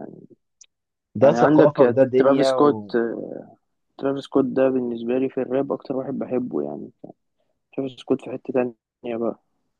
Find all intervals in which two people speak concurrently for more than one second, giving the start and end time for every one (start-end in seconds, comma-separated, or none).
1.2-2.8